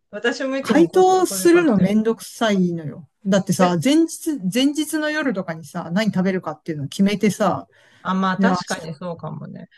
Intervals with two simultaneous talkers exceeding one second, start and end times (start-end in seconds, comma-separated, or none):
0.6-2.0